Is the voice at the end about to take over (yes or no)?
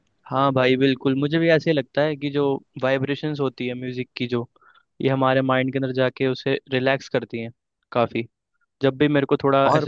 no